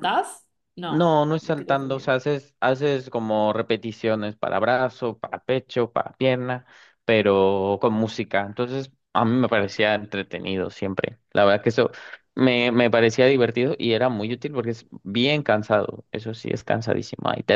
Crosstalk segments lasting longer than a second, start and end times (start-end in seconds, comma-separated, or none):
0.9-2.2